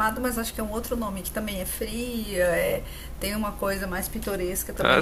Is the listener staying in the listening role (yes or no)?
no